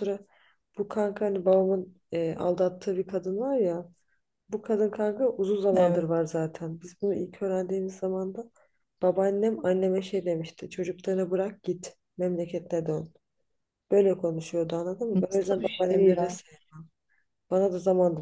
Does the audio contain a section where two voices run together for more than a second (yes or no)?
yes